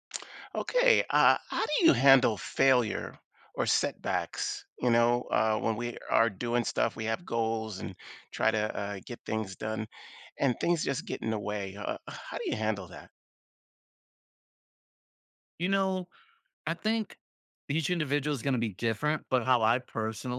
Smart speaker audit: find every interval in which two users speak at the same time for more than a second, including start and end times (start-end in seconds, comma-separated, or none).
none